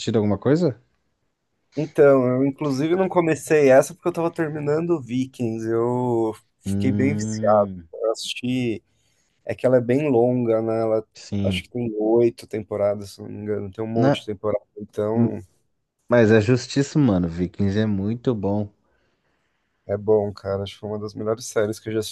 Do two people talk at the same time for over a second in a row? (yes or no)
yes